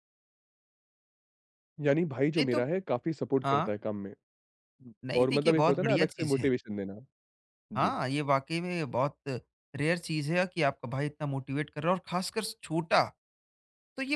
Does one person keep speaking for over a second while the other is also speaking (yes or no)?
yes